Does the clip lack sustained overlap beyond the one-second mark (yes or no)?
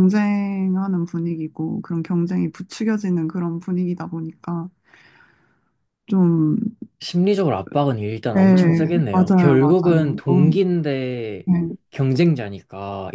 no